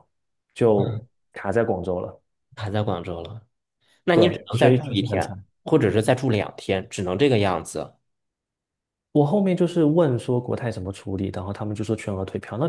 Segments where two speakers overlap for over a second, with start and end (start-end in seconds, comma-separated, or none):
4.1-5.4